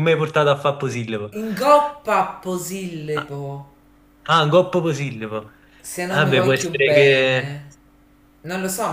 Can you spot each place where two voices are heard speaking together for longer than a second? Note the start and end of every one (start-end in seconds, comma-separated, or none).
6.1-7.6